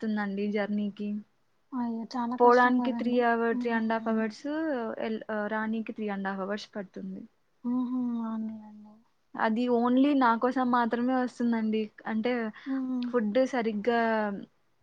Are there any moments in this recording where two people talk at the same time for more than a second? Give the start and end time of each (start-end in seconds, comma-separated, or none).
2.4-4.3